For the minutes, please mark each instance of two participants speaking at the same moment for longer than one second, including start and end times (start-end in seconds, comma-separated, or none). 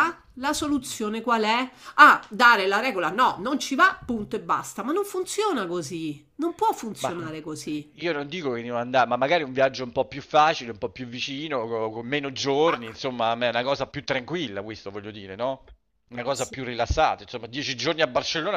none